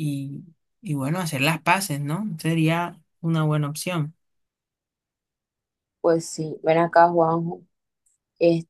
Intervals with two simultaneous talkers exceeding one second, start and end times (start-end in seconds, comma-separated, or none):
none